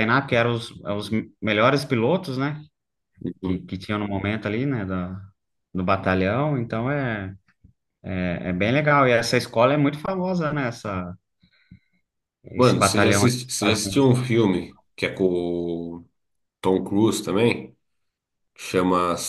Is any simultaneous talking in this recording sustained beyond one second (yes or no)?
yes